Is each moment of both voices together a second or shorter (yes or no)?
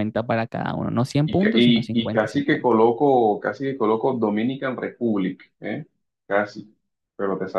no